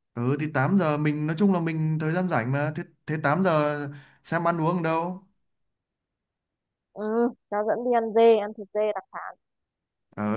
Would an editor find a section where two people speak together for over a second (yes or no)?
no